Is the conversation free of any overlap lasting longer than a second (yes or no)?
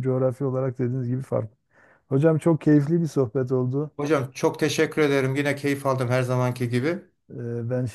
yes